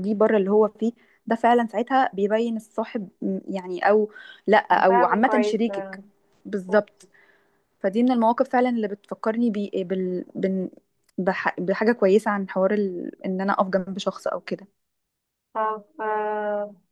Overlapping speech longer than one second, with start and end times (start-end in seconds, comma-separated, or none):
4.7-6.0